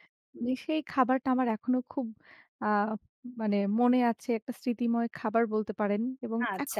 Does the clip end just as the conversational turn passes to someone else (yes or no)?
yes